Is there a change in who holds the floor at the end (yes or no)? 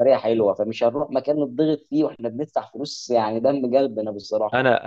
yes